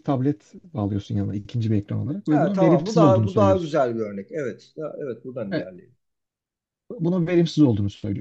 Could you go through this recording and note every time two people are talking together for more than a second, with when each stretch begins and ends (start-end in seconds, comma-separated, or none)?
2.3-3.8